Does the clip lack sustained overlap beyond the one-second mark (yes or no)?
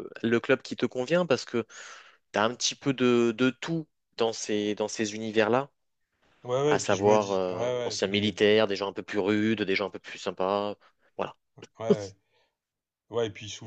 no